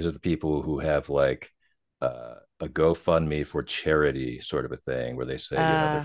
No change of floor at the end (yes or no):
yes